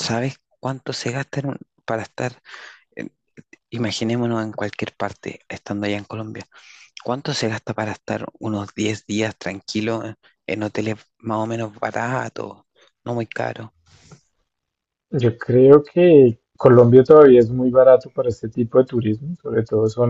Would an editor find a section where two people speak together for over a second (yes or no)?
no